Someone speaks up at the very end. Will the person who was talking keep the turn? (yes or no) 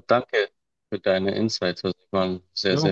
no